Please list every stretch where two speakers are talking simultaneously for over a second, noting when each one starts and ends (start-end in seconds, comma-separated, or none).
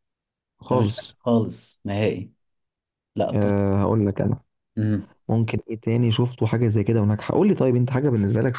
none